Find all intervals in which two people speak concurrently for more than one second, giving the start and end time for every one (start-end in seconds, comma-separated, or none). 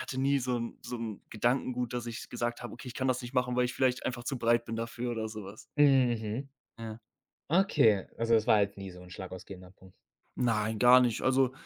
none